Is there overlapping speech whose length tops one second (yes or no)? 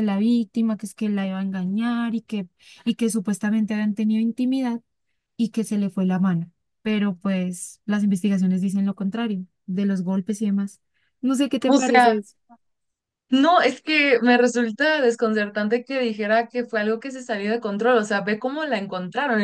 no